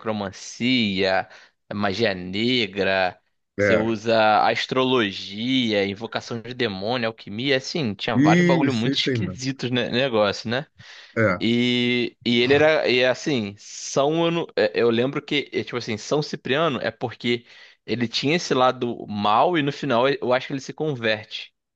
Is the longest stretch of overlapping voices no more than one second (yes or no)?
no